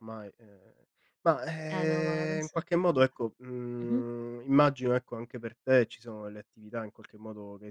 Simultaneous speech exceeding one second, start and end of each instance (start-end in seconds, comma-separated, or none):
1.7-3.1